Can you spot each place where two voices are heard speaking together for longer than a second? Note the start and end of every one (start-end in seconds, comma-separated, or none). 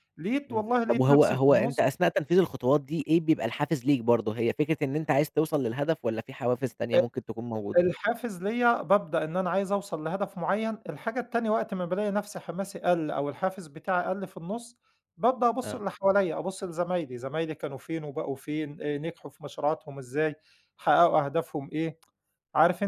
0.5-1.8